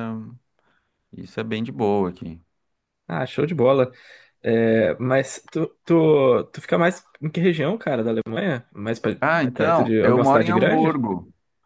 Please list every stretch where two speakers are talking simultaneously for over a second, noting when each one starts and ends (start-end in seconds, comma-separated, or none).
9.5-11.0